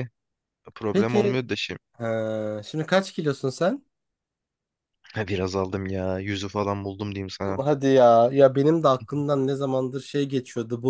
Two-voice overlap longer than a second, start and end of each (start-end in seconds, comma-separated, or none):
none